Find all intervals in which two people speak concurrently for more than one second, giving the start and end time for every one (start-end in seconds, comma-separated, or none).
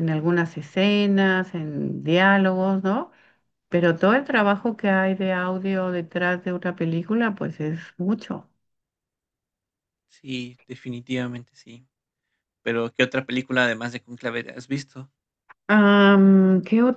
none